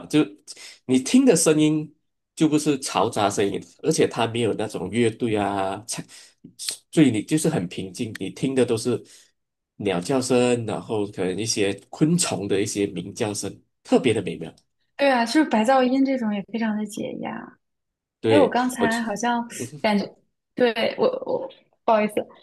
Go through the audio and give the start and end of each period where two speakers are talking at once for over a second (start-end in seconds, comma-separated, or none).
none